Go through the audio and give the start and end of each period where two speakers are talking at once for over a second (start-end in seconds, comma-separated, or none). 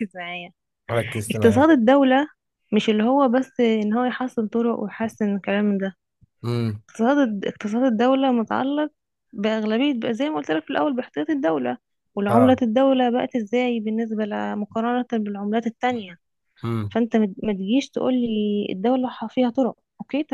none